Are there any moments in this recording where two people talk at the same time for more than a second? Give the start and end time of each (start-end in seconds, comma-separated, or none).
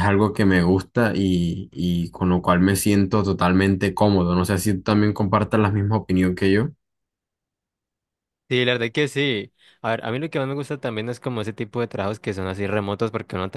none